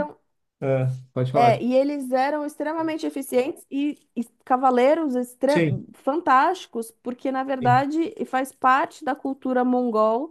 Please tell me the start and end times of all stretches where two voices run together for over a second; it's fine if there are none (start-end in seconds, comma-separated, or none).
none